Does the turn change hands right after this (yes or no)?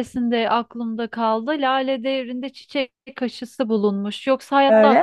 no